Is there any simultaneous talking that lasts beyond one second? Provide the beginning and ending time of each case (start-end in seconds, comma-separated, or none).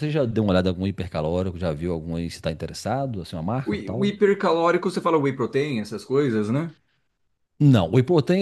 none